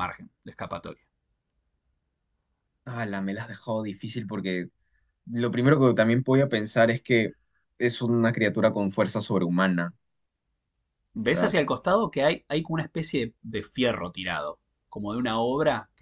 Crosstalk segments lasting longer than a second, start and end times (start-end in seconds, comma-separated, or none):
none